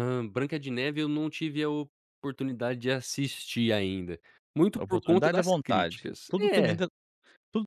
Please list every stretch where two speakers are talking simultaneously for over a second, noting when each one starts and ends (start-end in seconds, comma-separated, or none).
4.8-6.8